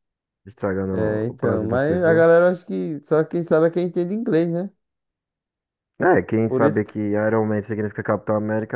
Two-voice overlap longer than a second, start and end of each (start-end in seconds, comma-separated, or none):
0.9-2.3